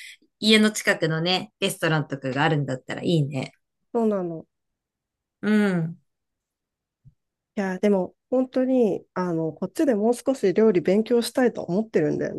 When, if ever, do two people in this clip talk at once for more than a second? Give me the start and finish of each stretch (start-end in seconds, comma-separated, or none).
none